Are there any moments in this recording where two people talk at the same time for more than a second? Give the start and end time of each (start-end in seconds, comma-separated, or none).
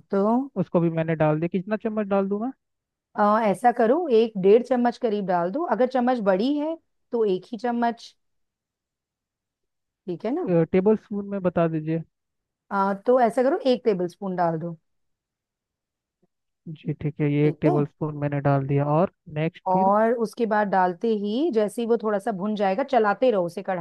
none